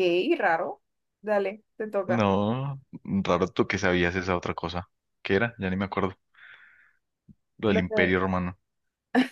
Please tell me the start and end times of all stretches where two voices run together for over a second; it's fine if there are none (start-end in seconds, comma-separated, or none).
none